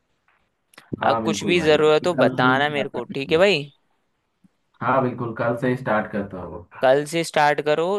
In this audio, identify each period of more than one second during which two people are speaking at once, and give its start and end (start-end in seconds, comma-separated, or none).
1.1-3.4